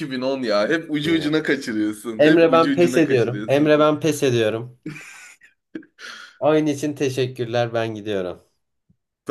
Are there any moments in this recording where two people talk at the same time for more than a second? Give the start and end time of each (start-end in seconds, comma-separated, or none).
2.2-3.8